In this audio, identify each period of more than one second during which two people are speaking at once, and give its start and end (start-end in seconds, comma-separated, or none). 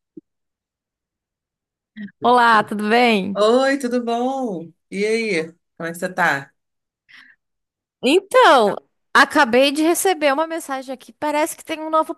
none